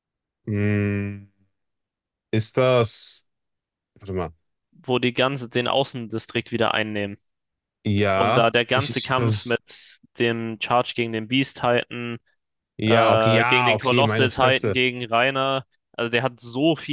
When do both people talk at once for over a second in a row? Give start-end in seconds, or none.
8.1-9.6, 12.8-14.8